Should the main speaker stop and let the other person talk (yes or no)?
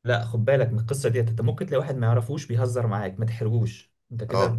yes